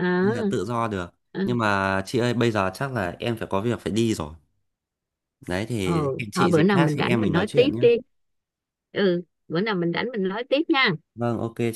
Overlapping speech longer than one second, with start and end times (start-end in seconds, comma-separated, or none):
5.8-7.8